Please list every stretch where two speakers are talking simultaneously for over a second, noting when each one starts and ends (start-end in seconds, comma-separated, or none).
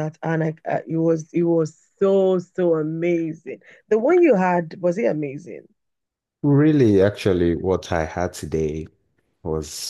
none